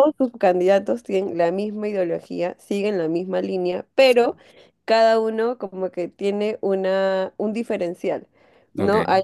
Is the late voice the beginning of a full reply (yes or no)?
no